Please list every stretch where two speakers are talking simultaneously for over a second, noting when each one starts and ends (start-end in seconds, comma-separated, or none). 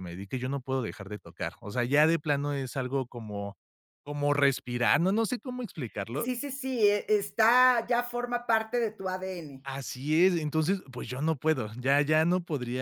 none